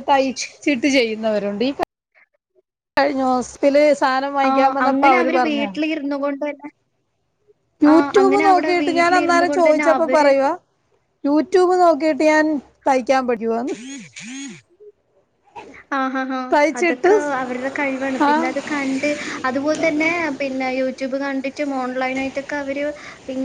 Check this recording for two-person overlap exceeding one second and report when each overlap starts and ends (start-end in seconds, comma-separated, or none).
7.9-10.2